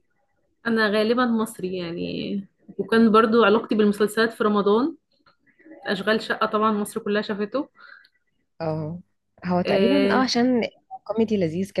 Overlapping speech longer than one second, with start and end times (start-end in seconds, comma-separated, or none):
none